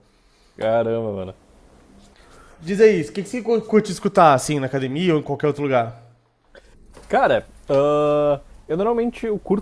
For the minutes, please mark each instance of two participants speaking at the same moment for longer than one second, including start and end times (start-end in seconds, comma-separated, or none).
none